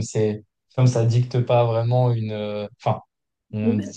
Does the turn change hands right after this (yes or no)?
no